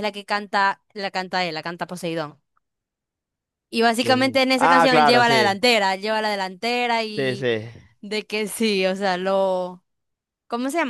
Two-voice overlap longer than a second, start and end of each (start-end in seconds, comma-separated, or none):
4.0-5.6